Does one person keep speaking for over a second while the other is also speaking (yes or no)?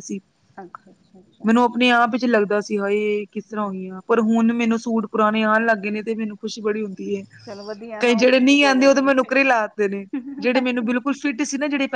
yes